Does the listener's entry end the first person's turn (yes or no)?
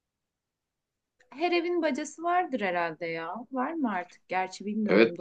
yes